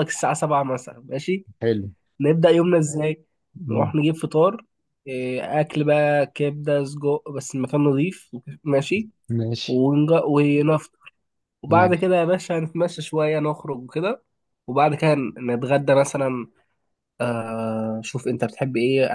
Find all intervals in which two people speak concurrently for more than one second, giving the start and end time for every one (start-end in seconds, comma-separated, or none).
none